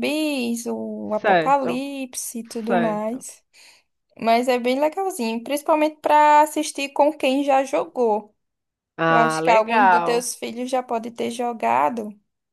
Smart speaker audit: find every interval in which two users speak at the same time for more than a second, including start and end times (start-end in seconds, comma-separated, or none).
9.1-10.3